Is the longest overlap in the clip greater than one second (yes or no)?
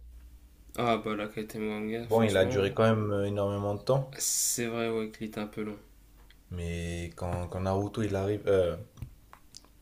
no